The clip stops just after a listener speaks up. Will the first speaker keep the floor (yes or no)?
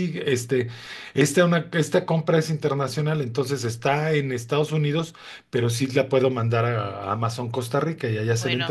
no